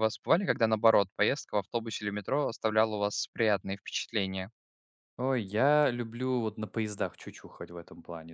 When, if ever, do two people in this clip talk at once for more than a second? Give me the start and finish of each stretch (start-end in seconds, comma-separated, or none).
none